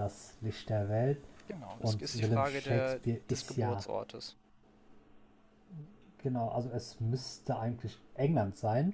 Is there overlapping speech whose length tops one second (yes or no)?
yes